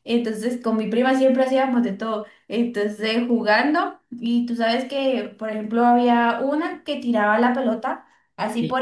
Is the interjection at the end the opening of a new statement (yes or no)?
no